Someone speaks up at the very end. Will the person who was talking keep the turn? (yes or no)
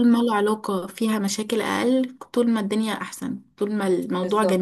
no